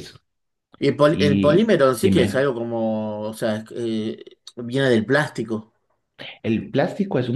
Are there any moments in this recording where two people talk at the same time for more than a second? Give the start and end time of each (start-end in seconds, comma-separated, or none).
1.1-2.5